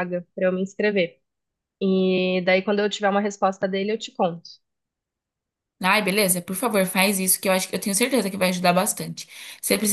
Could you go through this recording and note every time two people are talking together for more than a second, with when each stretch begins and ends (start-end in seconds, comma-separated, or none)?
none